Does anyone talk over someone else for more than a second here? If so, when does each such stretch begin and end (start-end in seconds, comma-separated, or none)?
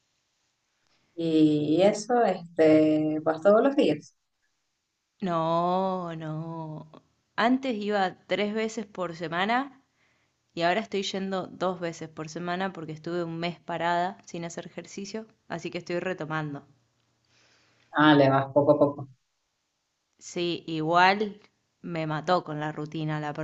none